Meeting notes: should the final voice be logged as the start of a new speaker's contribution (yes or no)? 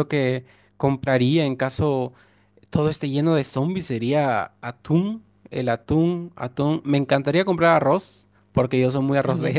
no